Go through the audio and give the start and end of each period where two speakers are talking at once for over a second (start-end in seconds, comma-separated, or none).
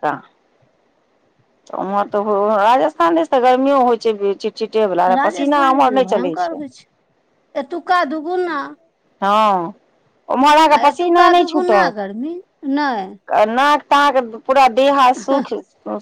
5.2-6.6